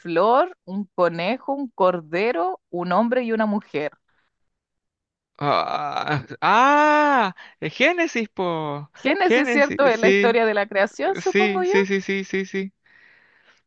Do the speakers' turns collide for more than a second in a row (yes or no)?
yes